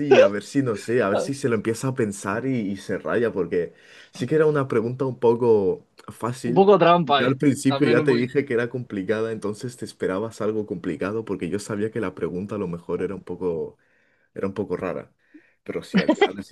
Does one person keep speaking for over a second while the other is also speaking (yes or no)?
yes